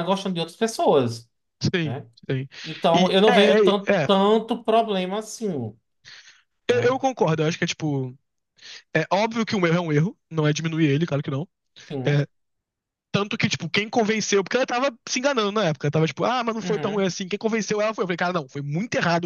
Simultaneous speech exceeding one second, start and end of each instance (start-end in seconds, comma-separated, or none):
none